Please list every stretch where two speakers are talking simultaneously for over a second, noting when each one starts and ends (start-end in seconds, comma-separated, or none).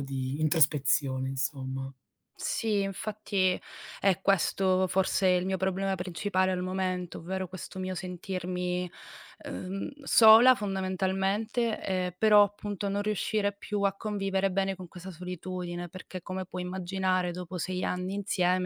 none